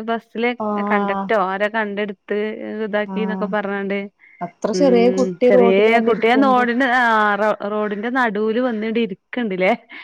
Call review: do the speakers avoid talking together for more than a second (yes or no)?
no